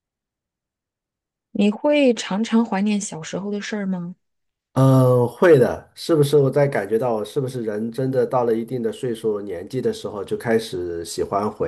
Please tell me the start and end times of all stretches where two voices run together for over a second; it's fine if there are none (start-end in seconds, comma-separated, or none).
none